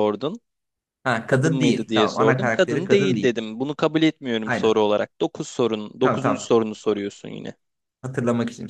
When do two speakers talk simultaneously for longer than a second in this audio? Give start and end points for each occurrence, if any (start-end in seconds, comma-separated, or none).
1.3-3.3